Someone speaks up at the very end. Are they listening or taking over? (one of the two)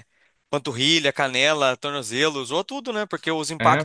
listening